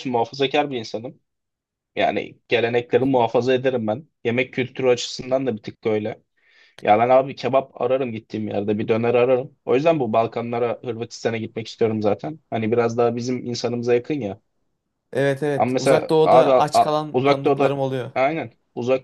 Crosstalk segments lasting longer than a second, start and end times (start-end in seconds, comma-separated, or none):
15.6-17.8